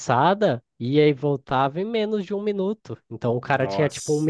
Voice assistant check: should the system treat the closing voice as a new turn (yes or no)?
no